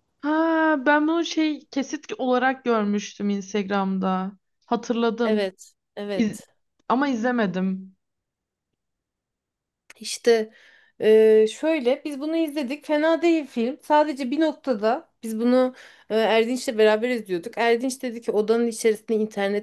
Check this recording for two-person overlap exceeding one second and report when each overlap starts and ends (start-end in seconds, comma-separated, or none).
none